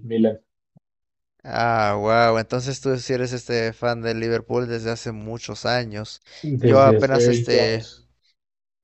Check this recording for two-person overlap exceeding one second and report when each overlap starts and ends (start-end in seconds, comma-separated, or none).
6.6-7.9